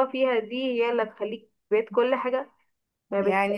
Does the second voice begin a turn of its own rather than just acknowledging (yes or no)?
yes